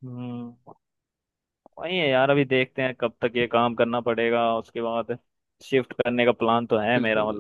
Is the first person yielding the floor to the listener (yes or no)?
yes